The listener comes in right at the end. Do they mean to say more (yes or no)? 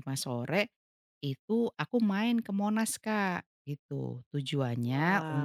no